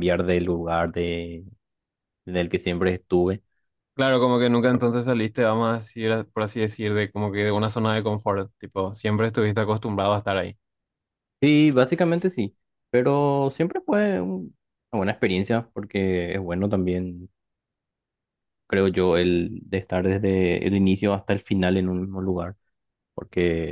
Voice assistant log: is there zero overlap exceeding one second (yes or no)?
yes